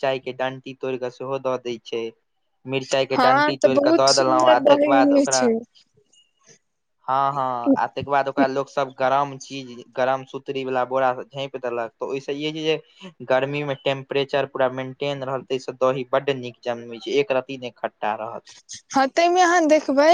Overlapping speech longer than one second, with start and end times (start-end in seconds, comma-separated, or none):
3.1-5.4